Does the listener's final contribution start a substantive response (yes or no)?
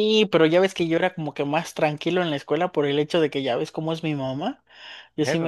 no